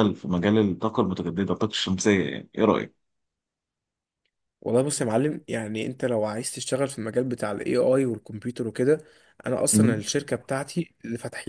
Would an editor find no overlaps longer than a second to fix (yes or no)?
yes